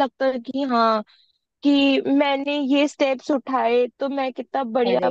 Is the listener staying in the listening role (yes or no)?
yes